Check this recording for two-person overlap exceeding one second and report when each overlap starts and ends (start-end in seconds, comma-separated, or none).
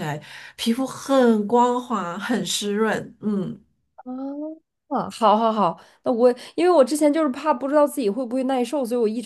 none